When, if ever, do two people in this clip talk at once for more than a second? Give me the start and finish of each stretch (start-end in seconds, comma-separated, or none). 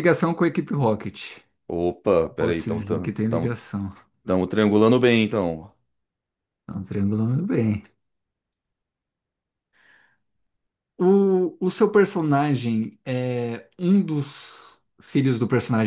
2.4-3.8